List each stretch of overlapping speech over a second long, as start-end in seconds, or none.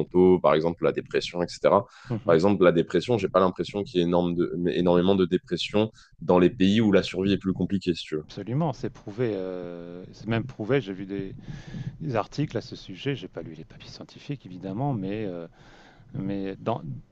none